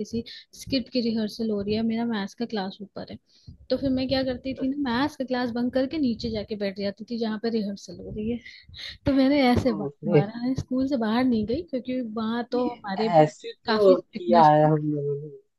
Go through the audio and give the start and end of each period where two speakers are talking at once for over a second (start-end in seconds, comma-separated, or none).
12.5-14.7